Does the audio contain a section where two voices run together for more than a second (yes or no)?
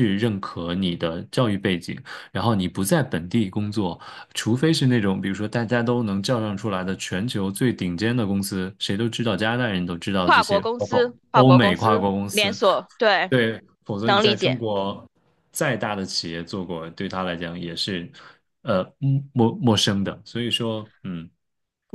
yes